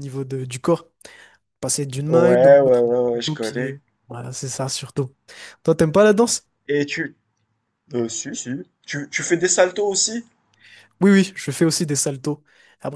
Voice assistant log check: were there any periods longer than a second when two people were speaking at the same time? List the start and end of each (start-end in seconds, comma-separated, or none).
2.1-3.8